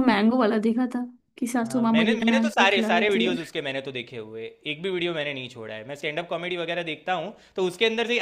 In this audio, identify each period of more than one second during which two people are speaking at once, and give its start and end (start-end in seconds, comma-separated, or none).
1.6-3.4